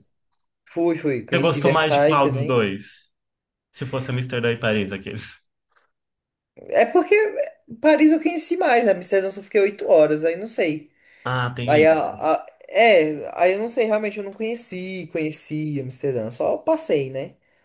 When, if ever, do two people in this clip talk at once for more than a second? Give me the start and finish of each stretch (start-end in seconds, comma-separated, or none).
1.3-2.6